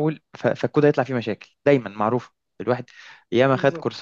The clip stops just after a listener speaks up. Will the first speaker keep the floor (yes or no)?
yes